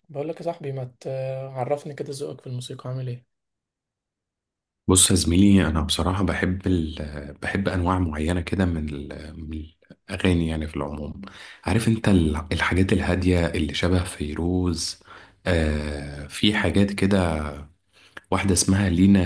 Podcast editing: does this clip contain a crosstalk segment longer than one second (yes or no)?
no